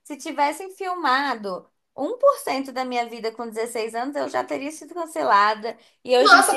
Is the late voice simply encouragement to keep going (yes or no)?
yes